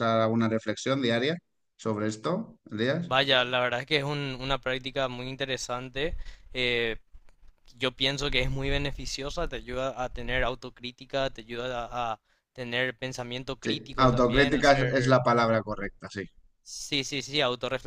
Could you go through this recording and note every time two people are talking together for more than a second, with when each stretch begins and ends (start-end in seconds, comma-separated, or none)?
13.6-15.2